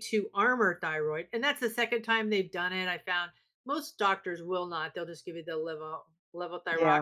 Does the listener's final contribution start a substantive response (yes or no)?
no